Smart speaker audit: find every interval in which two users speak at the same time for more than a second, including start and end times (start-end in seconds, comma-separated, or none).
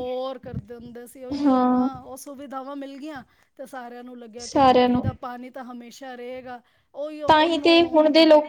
none